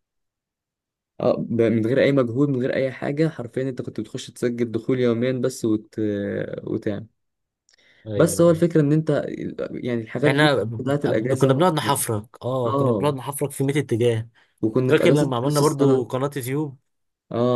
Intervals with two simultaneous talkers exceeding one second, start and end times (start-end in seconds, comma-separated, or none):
10.3-11.7, 14.9-16.1